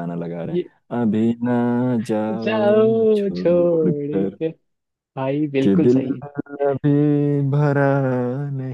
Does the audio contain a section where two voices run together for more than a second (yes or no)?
yes